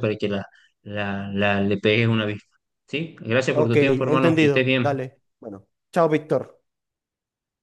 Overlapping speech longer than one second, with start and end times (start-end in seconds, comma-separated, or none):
3.5-5.0